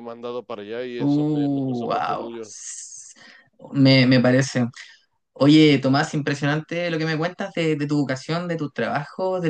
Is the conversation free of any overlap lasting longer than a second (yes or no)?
no